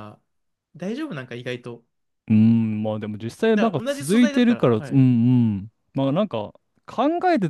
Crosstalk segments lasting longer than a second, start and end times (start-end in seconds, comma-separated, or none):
3.5-5.1